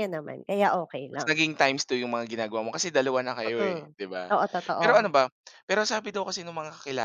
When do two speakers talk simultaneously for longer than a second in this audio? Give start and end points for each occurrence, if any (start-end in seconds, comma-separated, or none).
none